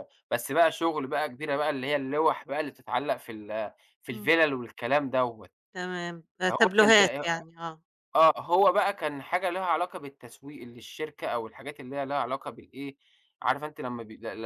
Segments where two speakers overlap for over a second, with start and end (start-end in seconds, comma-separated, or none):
none